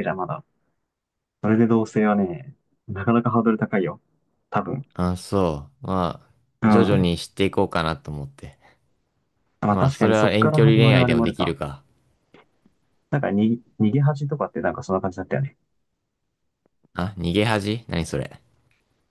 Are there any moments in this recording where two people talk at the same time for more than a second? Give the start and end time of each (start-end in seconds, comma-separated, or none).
9.7-11.5